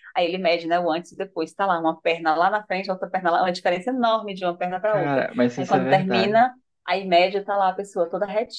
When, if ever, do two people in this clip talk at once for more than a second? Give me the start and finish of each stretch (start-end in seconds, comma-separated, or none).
4.8-6.4